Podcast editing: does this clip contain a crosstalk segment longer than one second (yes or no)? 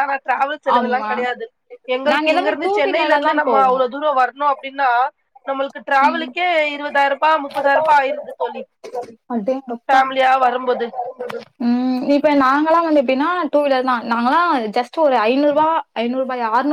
yes